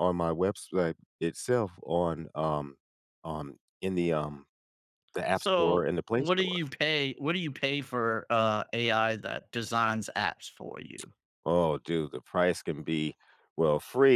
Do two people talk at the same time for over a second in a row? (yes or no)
yes